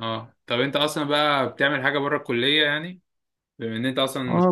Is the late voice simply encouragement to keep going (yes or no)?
no